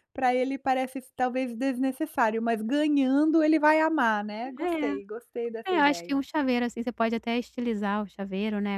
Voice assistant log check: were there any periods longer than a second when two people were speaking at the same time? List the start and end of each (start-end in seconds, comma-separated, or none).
none